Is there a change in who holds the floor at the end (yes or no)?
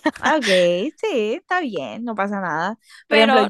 yes